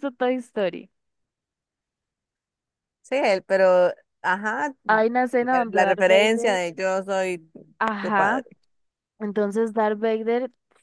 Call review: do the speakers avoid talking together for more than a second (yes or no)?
no